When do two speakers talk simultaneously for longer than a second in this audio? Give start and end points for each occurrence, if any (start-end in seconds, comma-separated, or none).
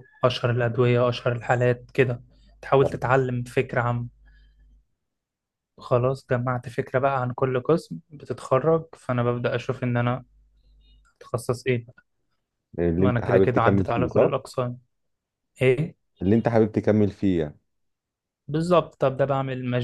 13.0-14.3